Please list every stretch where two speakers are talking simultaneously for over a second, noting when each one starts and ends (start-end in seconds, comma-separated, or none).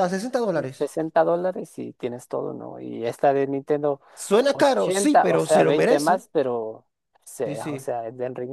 4.5-6.2